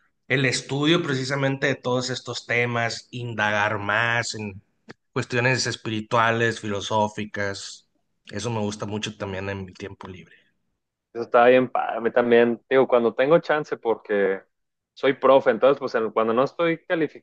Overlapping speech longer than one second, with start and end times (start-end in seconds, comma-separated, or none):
none